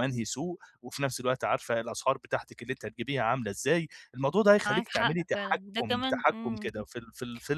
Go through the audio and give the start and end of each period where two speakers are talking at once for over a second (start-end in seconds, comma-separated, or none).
4.7-6.7